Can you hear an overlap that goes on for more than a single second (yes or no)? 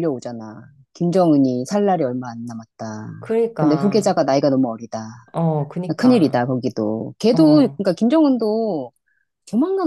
no